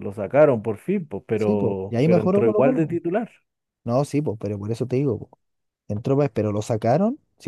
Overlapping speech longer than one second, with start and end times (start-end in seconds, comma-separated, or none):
1.4-3.0